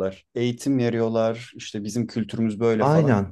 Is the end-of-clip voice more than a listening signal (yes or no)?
yes